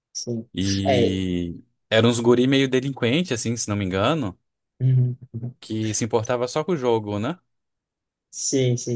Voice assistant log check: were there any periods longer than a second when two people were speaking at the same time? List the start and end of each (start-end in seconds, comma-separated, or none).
none